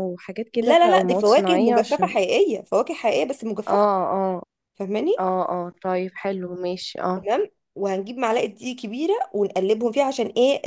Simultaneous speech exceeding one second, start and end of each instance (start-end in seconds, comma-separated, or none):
0.6-2.1